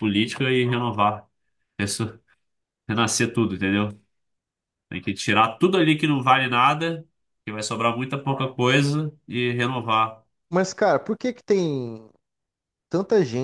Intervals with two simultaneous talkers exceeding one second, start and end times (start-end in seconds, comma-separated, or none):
none